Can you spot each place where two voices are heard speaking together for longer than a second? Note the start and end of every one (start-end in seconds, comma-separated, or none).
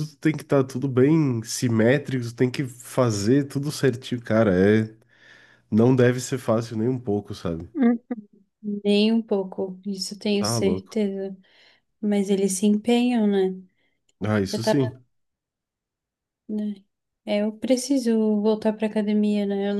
none